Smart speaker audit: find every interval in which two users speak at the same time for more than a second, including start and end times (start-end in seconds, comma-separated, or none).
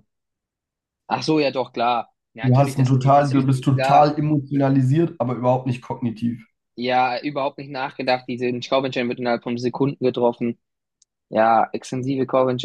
2.4-4.1